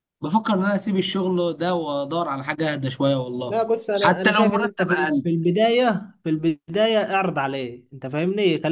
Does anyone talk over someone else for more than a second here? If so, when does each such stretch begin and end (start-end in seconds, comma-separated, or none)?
3.5-5.3